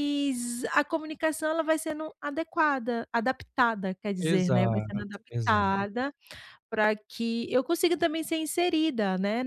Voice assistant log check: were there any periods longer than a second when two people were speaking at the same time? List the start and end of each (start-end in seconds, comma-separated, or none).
4.2-5.8